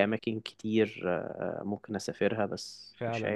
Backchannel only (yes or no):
no